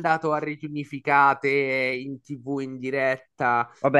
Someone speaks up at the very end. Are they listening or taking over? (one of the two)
taking over